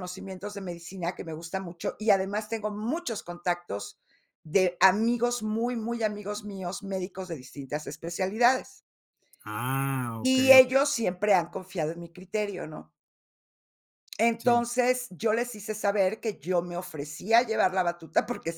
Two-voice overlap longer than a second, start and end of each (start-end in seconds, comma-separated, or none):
none